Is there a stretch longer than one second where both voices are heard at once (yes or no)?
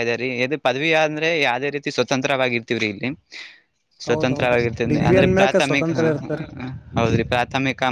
yes